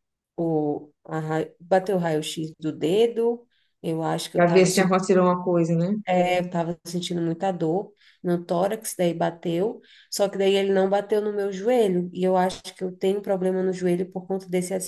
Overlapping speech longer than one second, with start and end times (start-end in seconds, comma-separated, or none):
none